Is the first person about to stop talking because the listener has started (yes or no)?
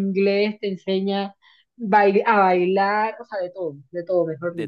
yes